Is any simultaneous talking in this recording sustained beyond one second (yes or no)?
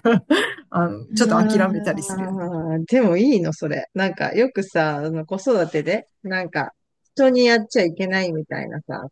yes